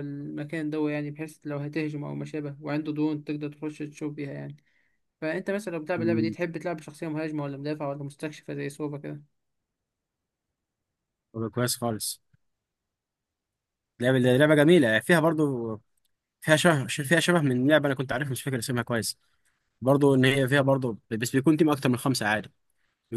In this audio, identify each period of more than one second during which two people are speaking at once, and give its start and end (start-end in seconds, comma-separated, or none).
none